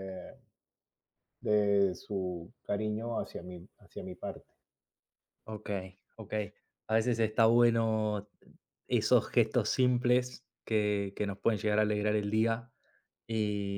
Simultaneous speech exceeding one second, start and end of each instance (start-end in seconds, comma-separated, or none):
none